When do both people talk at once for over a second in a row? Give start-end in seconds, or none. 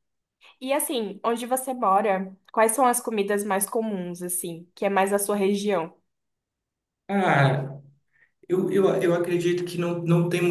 none